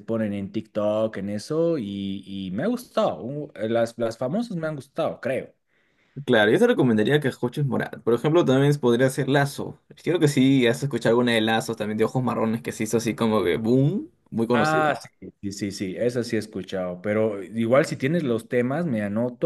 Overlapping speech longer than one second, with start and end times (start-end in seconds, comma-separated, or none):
none